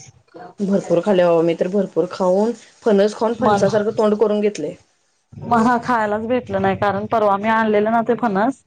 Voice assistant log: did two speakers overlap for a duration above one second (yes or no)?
no